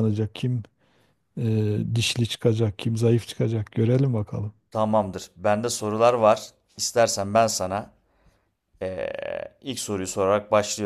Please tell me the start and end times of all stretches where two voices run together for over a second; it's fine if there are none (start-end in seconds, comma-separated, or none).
none